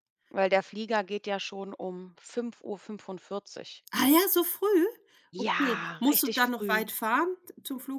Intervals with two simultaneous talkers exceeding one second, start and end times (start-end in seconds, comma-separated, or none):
5.3-6.8